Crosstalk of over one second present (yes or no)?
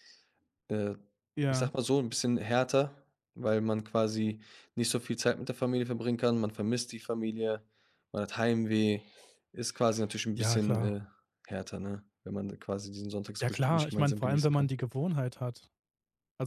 yes